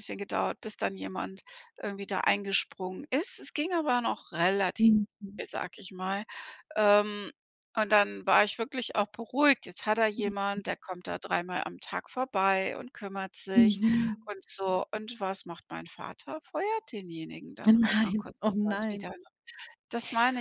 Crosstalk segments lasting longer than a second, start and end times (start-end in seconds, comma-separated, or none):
17.7-19.1